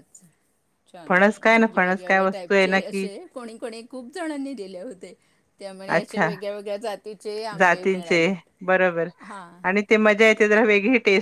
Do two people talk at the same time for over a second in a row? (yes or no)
yes